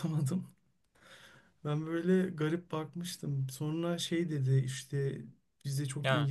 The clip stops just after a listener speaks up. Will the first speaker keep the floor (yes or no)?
yes